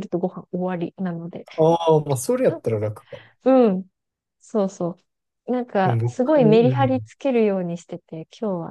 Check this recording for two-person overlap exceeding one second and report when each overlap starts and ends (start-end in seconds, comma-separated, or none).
5.8-7.1